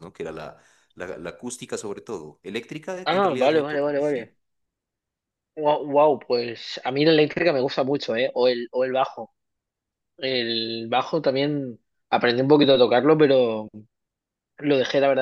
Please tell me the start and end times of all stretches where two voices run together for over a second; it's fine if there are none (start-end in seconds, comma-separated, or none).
3.0-4.3